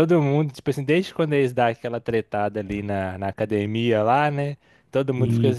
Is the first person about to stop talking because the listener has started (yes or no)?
no